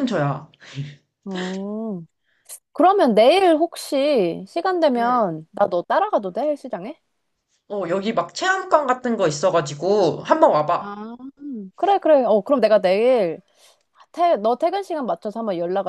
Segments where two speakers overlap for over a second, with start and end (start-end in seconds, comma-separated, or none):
none